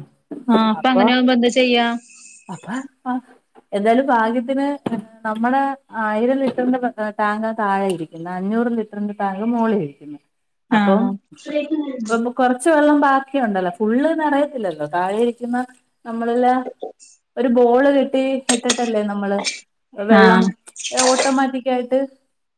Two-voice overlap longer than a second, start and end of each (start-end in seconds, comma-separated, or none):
none